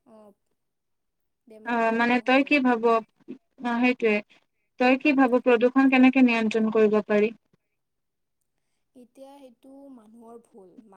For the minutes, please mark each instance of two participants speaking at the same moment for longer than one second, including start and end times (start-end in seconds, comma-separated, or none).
none